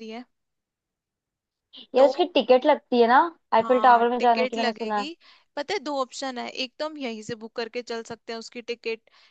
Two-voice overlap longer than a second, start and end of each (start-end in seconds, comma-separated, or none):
3.6-5.1